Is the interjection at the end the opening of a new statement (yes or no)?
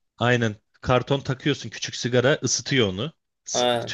yes